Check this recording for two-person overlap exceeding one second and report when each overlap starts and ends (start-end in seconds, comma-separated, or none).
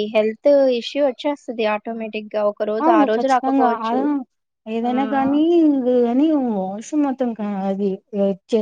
none